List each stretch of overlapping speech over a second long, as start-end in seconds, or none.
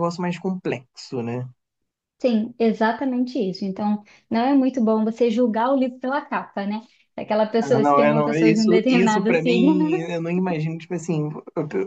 7.6-9.8